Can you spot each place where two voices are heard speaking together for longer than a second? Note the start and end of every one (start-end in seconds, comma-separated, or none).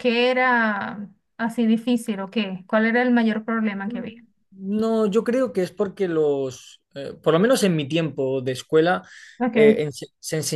none